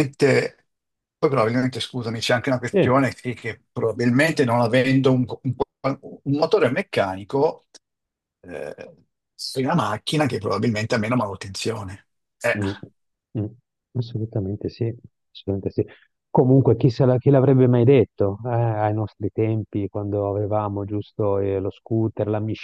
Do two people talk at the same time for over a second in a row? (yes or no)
no